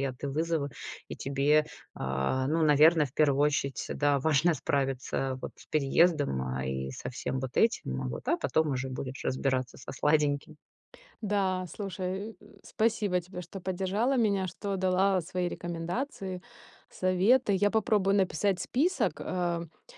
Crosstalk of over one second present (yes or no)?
no